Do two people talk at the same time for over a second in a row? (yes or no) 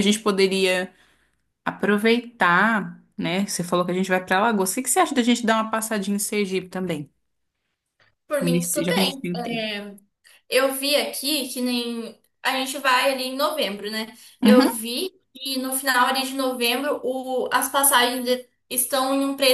yes